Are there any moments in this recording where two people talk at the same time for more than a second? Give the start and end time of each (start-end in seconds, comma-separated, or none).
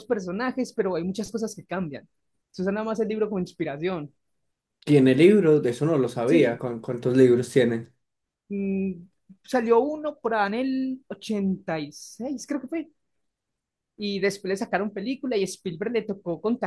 none